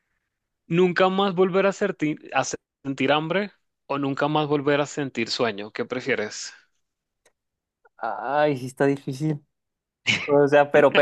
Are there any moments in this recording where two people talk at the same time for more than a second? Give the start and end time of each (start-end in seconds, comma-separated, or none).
none